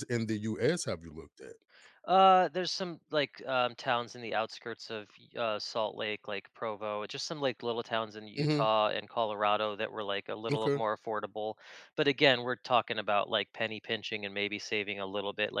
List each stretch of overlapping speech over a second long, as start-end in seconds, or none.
none